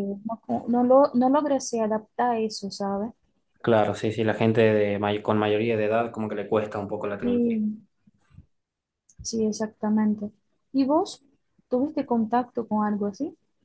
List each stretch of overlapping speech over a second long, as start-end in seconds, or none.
none